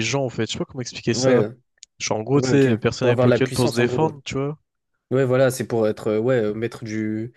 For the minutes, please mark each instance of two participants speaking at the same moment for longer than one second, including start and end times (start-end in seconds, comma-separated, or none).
2.3-4.1